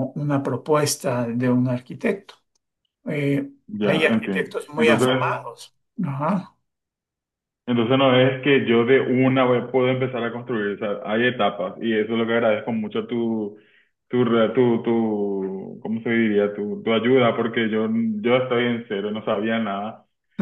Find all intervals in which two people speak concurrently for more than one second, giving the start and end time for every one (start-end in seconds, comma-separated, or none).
3.7-5.5